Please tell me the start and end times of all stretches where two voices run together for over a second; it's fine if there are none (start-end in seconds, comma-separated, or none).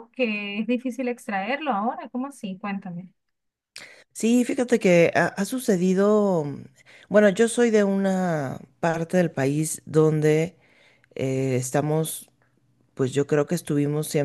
none